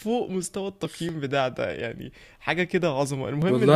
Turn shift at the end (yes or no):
no